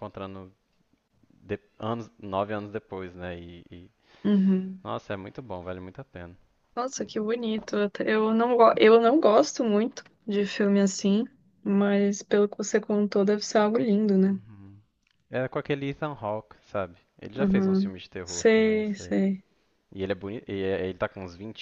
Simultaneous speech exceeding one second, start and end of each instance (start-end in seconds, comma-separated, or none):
17.3-19.2